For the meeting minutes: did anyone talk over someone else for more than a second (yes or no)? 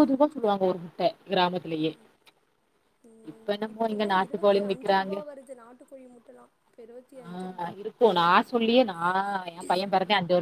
yes